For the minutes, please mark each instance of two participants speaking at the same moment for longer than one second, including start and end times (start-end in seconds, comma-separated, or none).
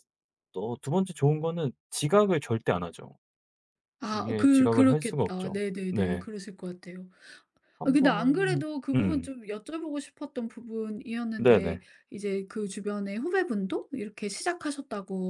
4.1-6.2, 7.8-9.3